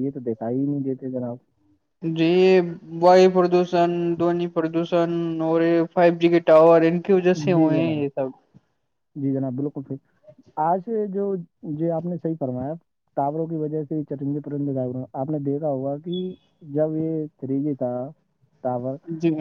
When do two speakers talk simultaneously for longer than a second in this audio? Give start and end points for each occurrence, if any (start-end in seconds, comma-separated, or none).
none